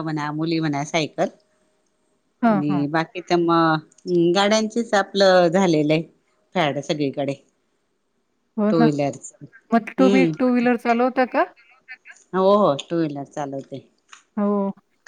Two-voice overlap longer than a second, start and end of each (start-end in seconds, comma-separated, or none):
none